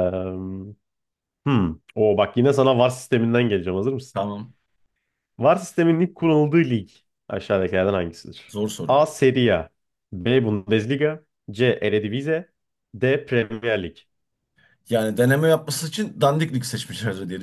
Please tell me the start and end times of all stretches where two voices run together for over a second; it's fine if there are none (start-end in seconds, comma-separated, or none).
none